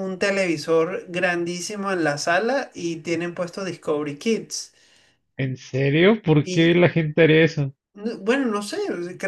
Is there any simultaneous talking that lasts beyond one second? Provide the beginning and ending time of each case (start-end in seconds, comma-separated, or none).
none